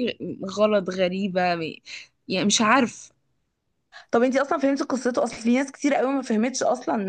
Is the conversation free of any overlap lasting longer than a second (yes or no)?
yes